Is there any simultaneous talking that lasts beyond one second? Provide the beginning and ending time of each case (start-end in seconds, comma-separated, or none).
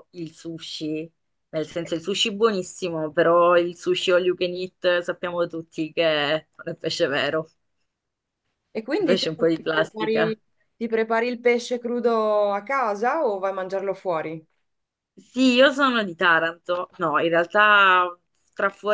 9.0-10.4